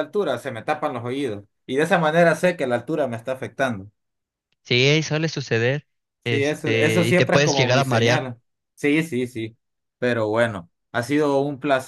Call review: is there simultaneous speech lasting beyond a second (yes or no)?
yes